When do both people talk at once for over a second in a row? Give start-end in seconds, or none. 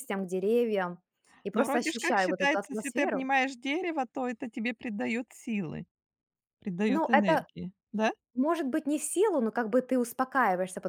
1.5-3.3